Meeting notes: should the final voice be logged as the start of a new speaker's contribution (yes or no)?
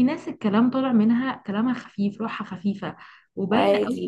no